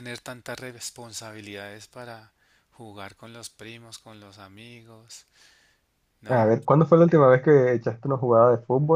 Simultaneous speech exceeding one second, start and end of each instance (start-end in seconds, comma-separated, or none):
none